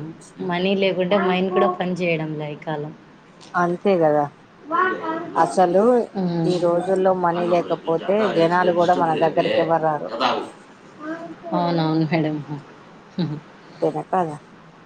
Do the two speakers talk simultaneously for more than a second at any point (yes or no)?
yes